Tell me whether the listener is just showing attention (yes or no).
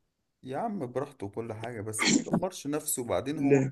yes